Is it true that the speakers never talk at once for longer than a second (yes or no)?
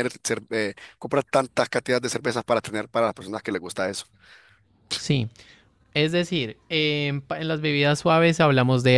yes